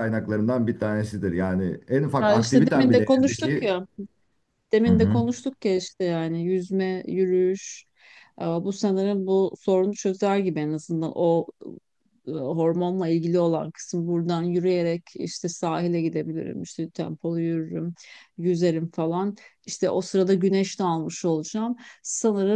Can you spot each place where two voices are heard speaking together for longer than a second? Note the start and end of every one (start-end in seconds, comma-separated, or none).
2.2-3.7